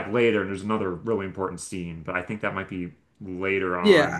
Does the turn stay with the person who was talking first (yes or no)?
no